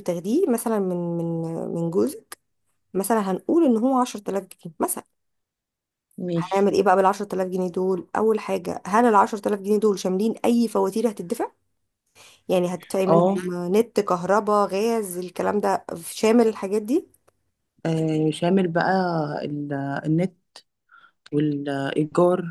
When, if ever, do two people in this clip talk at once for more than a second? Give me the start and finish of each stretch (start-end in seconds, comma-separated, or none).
none